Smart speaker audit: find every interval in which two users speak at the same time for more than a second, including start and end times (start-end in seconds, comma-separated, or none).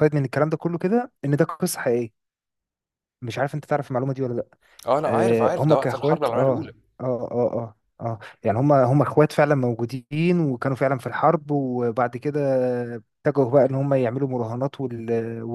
5.1-6.7